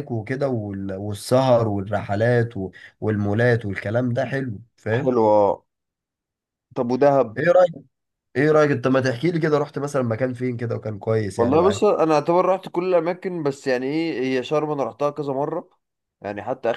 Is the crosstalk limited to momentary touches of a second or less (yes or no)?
yes